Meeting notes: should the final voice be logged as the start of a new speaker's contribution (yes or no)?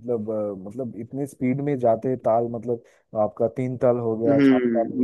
yes